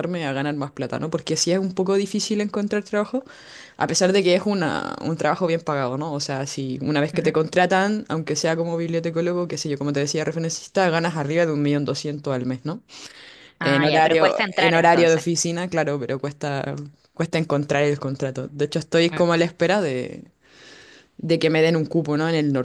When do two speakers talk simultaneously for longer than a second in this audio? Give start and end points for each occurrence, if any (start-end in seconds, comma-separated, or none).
13.6-15.2